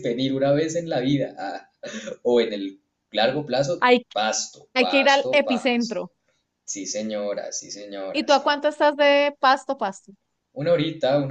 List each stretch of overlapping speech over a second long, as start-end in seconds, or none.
4.7-6.0